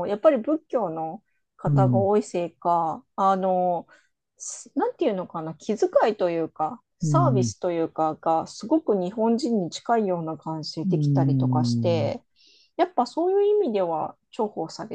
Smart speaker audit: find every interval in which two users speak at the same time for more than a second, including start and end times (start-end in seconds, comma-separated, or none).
10.8-12.1